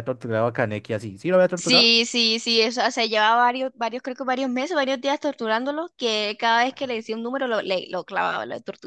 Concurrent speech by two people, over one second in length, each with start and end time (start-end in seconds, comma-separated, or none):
none